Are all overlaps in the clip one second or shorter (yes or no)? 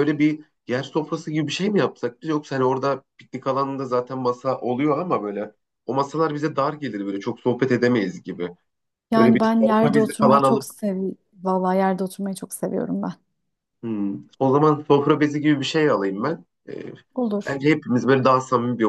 no